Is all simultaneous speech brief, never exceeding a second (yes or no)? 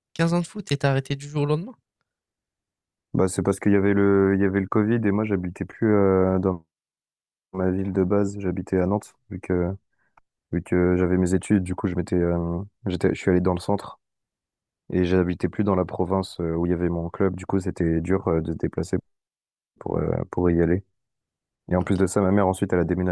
yes